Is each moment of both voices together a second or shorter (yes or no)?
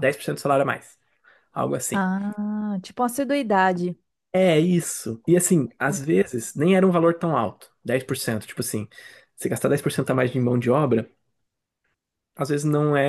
yes